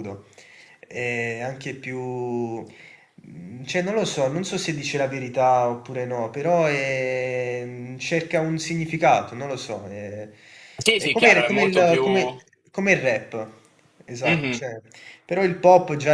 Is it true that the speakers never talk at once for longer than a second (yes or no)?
no